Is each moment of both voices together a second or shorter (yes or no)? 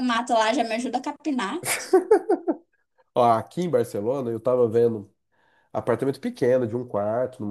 yes